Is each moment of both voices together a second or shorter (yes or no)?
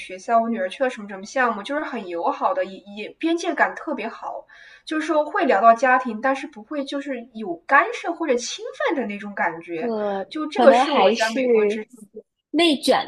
no